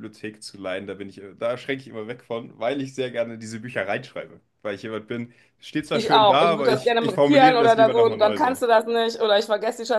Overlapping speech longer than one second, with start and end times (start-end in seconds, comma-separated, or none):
5.9-8.6